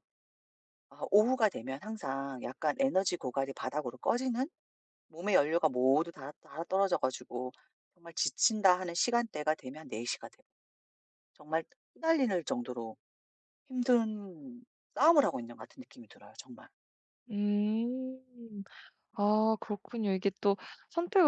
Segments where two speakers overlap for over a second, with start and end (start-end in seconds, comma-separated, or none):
none